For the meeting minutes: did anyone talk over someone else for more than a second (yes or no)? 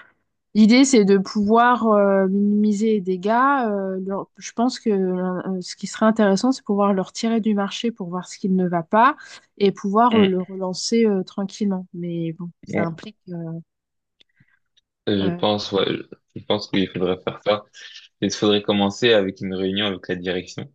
no